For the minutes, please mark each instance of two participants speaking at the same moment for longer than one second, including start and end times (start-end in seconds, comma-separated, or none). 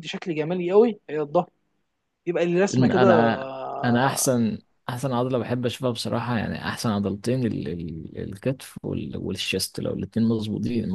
2.7-4.3